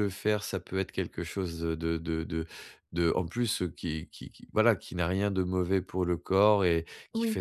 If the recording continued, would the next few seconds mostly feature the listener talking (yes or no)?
no